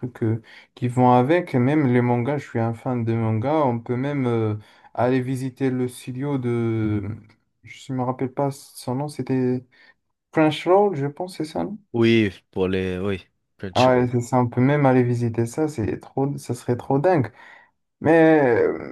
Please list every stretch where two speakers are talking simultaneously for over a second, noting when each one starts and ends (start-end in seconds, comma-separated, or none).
none